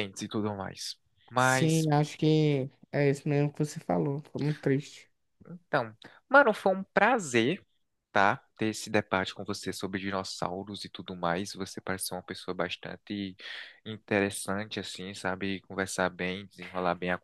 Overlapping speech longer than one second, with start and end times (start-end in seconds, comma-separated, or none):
none